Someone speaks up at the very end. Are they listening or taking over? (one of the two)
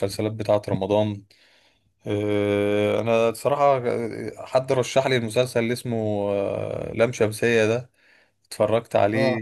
listening